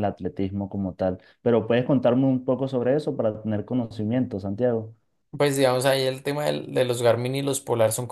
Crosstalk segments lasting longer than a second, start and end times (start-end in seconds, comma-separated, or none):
none